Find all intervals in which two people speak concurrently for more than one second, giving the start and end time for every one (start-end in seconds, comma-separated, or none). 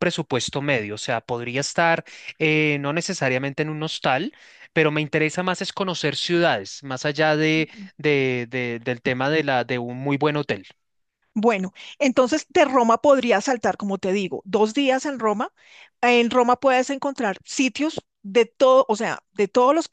none